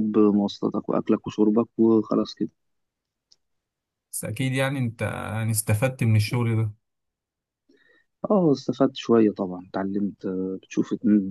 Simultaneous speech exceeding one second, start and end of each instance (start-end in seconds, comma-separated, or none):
none